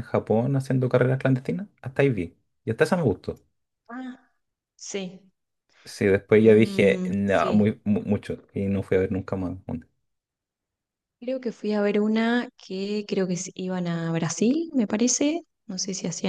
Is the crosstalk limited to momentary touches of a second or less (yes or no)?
no